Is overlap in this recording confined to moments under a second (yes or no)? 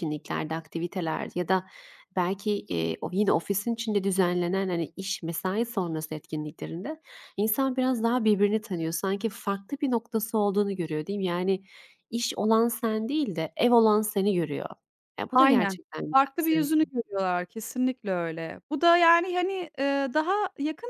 no